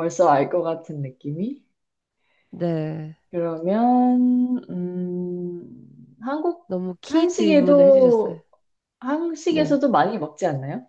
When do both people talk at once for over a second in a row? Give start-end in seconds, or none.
7.1-8.4